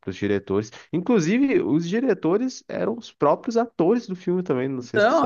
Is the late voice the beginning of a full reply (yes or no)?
yes